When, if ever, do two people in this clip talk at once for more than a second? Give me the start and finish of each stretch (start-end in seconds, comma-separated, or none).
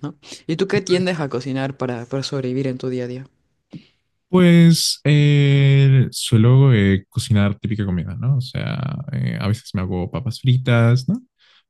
none